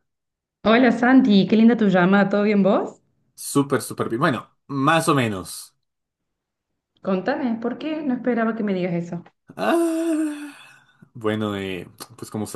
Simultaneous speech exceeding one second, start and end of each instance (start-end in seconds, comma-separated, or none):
none